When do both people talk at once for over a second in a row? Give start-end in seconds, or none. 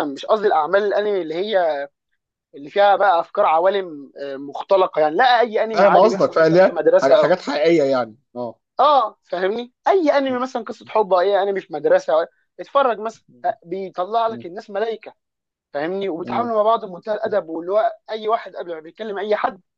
5.7-7.3